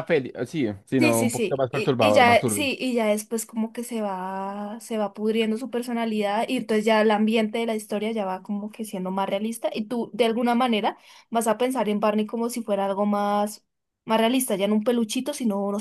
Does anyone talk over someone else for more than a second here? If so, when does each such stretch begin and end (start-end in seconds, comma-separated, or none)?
1.0-2.7